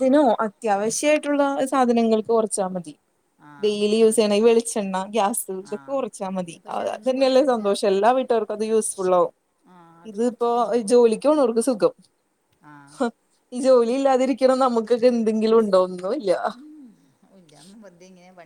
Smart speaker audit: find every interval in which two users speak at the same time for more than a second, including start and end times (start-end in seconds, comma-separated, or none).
5.7-7.7